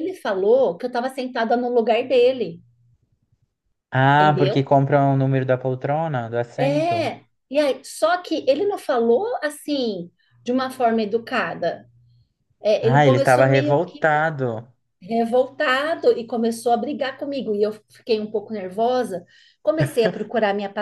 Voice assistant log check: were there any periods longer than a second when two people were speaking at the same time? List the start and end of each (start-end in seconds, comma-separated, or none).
12.8-14.0